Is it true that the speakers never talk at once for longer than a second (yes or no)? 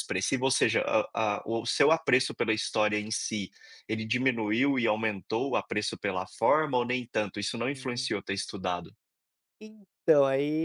yes